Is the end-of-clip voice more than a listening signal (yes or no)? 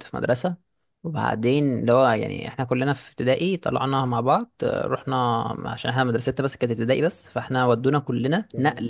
no